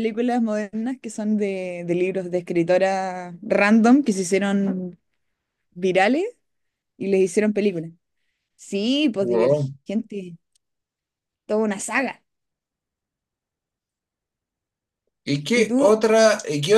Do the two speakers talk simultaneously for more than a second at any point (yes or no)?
no